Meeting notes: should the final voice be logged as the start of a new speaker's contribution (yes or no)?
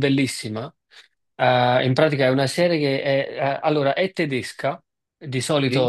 no